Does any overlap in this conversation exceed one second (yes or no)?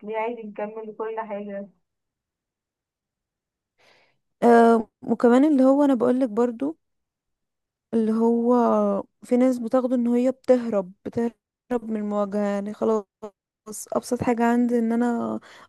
no